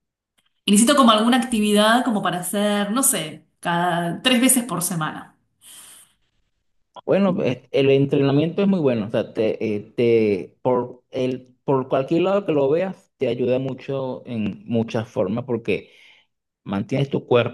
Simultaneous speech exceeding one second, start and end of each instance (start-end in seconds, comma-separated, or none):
none